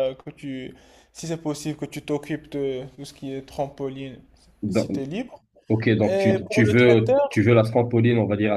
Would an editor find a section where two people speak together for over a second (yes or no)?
yes